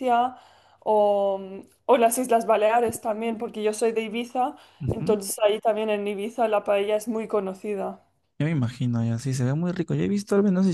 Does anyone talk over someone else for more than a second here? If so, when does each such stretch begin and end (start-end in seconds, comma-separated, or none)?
none